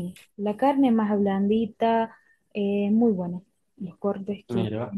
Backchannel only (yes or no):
yes